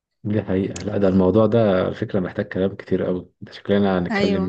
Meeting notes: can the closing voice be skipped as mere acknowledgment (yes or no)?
yes